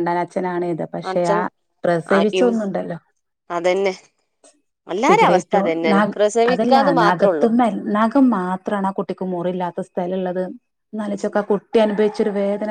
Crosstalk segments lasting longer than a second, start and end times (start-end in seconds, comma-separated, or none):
5.1-7.5